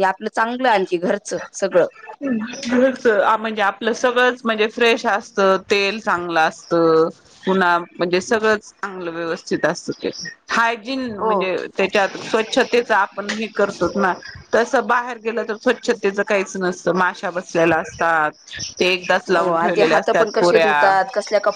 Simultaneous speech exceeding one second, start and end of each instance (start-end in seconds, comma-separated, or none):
19.3-20.8